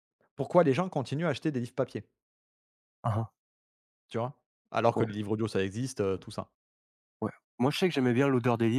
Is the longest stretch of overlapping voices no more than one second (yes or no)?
yes